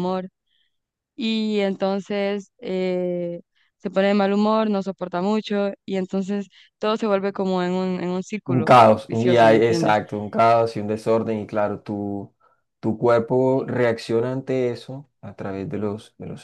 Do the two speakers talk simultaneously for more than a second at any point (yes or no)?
yes